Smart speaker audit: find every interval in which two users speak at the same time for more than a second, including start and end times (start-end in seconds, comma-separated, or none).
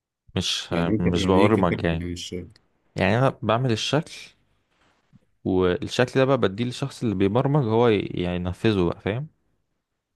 0.7-2.0